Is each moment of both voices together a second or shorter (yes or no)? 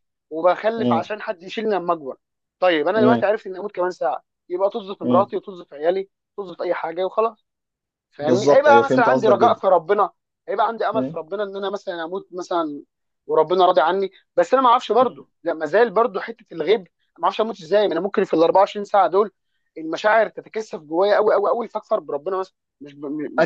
no